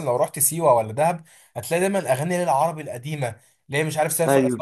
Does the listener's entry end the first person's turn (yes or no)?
no